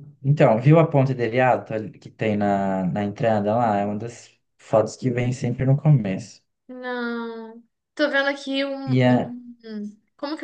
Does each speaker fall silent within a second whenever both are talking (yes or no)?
yes